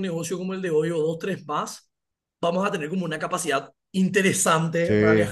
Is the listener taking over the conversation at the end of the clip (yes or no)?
no